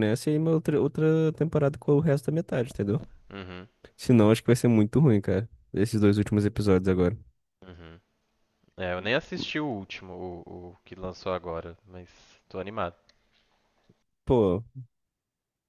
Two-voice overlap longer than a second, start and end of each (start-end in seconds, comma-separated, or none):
none